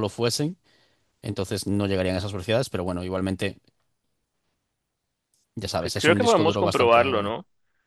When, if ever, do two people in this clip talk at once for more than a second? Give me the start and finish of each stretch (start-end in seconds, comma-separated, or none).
5.8-7.3